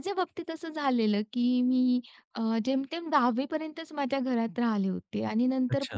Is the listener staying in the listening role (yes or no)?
yes